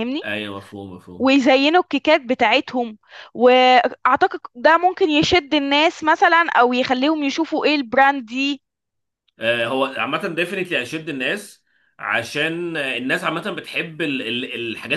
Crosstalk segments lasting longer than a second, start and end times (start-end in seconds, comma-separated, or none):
none